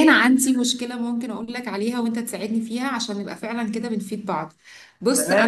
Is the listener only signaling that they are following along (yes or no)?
no